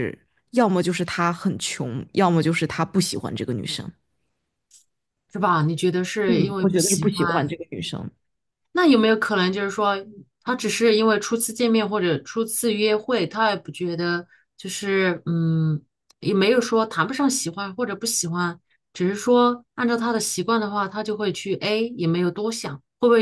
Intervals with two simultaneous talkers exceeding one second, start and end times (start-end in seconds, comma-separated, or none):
6.2-7.6